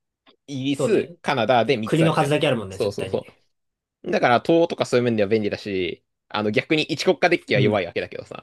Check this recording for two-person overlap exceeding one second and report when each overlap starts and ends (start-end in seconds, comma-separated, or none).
1.8-3.2